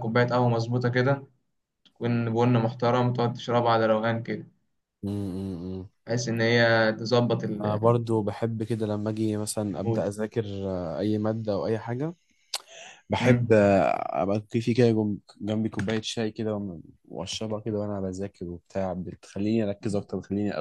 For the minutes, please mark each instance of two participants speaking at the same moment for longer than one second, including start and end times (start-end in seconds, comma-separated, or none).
none